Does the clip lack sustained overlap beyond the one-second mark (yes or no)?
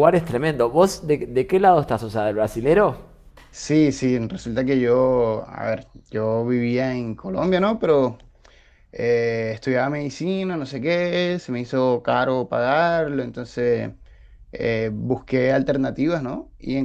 yes